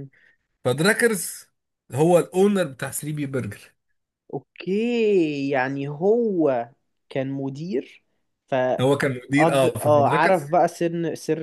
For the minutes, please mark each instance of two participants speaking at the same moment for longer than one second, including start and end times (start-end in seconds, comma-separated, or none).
8.8-10.5